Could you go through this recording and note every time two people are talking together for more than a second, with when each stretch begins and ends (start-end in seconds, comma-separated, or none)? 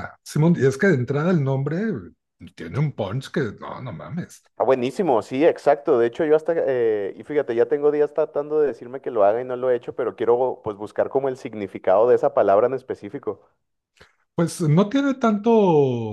none